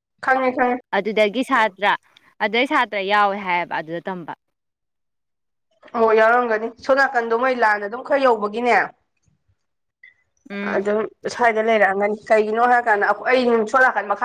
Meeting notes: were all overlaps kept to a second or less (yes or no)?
yes